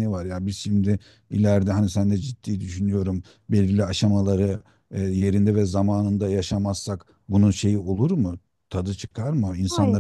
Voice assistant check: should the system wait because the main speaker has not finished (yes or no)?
no